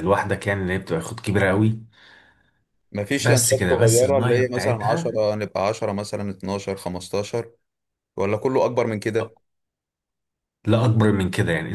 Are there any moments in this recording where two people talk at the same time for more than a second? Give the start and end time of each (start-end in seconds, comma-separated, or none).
3.2-5.2